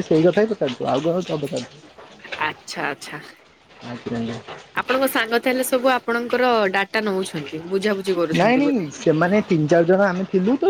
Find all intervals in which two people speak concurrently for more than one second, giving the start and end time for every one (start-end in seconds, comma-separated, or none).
none